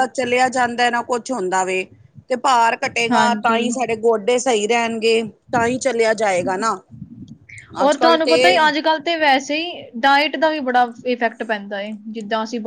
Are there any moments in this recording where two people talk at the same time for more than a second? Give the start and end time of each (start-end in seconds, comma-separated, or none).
none